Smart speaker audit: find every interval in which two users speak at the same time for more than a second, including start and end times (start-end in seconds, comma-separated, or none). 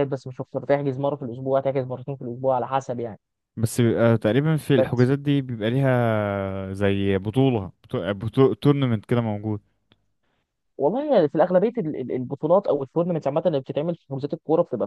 none